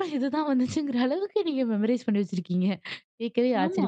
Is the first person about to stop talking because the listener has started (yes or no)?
no